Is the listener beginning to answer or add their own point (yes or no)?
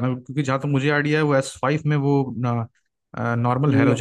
yes